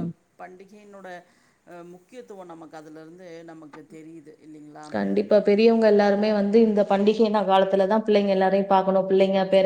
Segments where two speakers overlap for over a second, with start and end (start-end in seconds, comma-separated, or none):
none